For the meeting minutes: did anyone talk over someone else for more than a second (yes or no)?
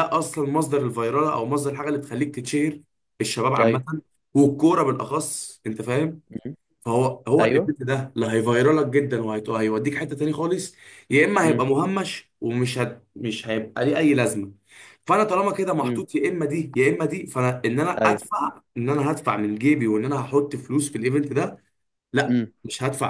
no